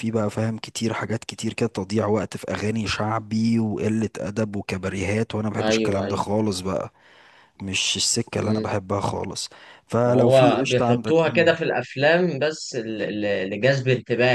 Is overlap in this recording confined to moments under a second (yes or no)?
no